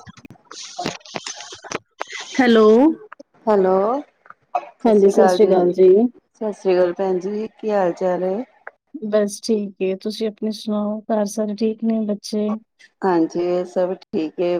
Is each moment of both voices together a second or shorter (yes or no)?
yes